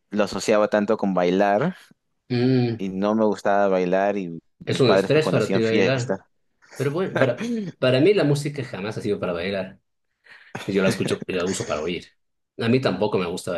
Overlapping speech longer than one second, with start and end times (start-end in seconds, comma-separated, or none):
4.7-6.2